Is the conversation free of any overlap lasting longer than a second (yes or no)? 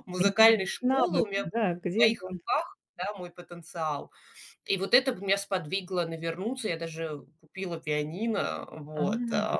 no